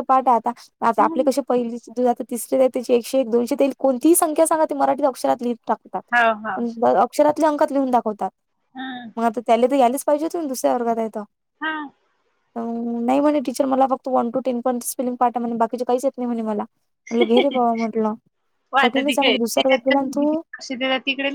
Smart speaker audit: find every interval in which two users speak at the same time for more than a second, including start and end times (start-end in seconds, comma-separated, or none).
18.8-20.4